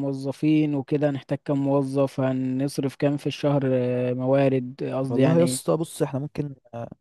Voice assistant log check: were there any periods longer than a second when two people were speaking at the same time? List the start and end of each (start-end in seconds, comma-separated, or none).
none